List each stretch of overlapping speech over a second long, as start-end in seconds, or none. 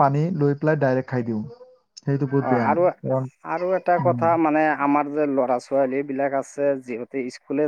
none